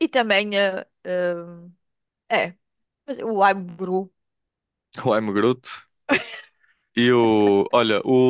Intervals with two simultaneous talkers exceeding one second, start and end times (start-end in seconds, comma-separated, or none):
none